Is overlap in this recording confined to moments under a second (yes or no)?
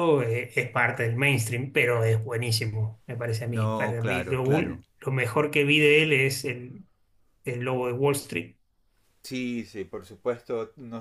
no